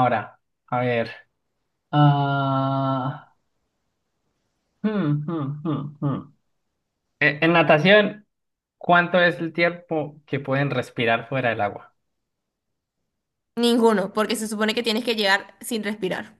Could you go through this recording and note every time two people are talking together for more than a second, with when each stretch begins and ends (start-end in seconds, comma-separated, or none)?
none